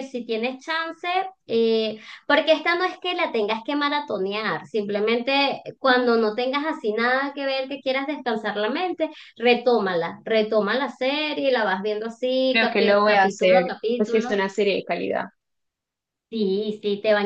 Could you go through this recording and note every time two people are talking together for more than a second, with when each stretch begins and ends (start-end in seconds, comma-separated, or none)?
12.5-14.4